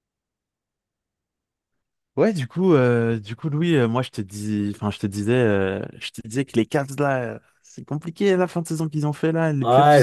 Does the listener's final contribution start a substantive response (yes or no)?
yes